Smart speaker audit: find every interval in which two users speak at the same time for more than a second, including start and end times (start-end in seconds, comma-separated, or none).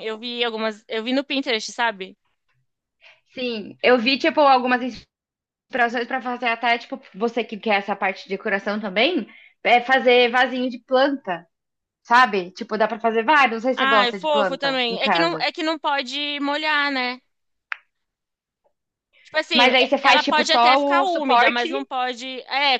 13.8-15.5, 19.5-21.7